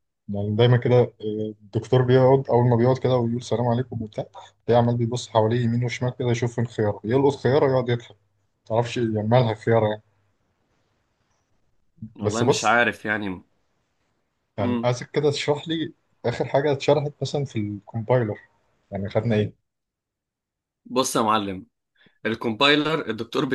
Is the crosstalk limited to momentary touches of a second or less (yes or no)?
yes